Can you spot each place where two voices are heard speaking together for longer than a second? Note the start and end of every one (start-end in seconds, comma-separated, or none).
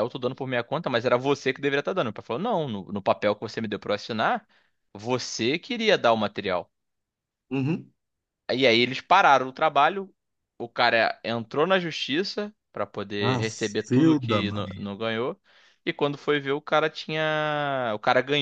13.2-14.7